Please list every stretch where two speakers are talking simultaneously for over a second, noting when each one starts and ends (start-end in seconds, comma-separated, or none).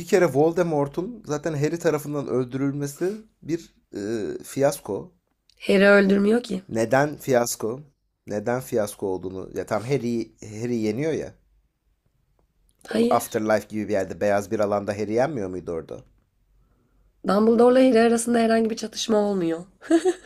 none